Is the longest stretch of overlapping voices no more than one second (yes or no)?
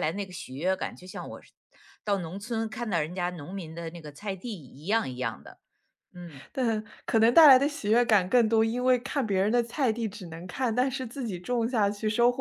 yes